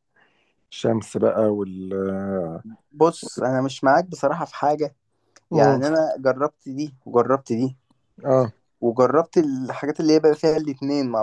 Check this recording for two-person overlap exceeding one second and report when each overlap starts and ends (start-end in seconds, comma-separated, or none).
none